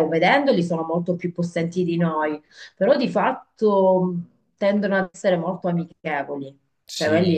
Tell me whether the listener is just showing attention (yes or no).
yes